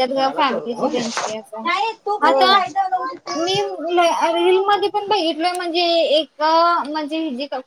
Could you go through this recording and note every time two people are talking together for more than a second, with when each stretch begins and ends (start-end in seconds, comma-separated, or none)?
none